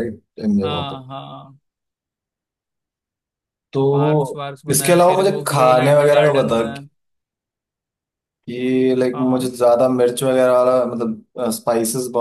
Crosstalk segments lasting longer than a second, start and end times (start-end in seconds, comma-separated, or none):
4.7-6.6